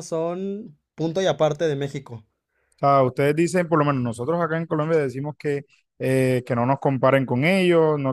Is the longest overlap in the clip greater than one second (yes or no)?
no